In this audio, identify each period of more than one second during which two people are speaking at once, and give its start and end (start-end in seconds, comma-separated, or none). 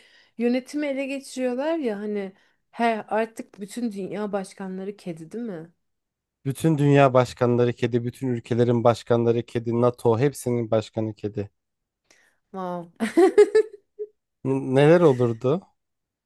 none